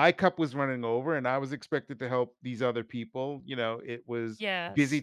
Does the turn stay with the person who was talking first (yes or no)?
yes